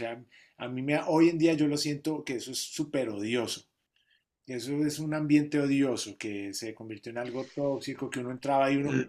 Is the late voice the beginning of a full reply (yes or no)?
no